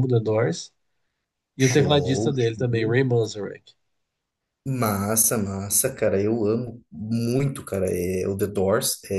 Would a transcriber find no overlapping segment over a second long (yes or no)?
no